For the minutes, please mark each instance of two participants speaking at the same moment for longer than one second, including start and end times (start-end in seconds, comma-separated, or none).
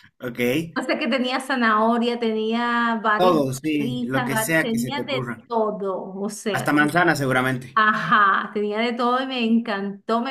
3.1-5.4